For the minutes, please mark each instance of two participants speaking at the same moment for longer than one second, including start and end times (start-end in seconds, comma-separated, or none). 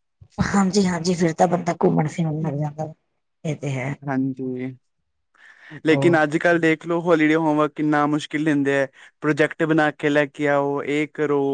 none